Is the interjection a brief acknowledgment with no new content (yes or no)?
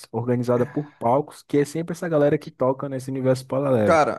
no